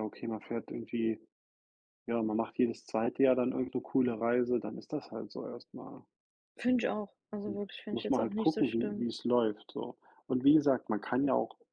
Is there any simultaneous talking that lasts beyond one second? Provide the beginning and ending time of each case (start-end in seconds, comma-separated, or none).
7.5-9.1